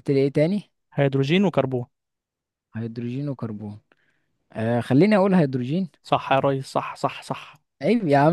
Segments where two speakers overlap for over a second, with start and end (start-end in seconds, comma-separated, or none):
none